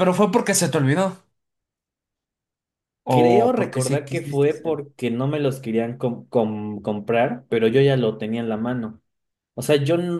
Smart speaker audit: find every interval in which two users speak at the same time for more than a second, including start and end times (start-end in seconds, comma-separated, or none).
3.1-4.8